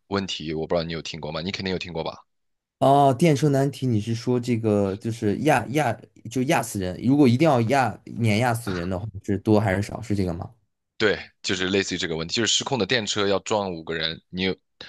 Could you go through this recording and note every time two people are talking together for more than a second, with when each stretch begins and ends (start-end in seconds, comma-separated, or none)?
none